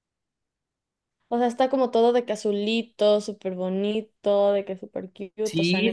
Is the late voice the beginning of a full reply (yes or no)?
yes